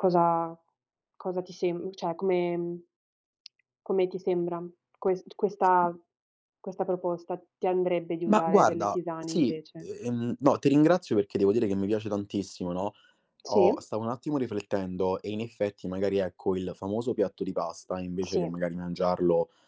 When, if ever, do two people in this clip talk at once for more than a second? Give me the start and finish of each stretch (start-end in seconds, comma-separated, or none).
8.2-9.9